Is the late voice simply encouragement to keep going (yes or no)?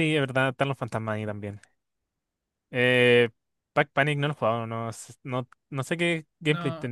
no